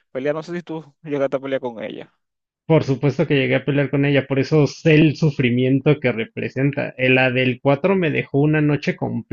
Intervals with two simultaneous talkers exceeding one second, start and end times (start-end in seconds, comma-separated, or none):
none